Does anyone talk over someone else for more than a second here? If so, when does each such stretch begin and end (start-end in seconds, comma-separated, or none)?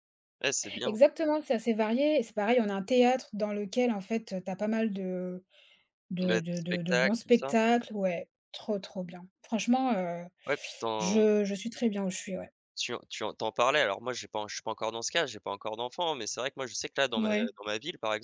6.2-7.6